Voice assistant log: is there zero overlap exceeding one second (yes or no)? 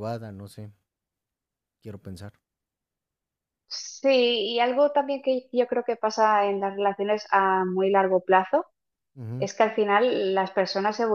yes